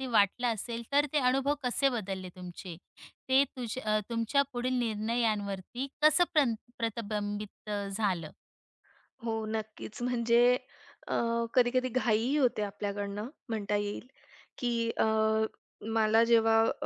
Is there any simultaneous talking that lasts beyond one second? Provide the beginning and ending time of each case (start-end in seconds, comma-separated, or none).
none